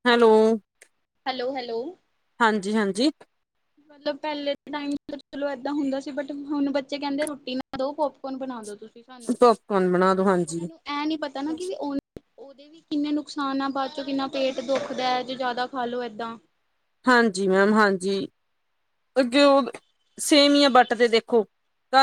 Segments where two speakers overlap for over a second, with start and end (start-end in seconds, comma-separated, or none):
none